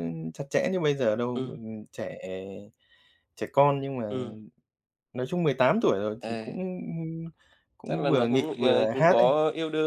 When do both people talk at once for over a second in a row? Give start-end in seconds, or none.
7.8-9.3